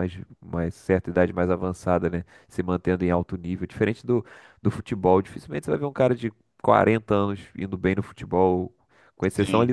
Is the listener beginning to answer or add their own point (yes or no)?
no